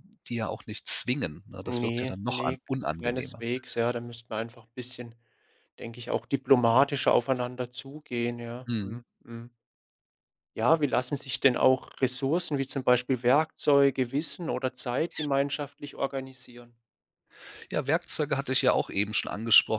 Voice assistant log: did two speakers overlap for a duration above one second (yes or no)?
yes